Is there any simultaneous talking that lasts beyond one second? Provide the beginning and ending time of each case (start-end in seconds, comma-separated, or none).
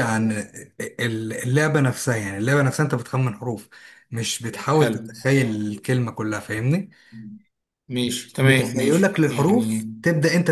8.4-9.8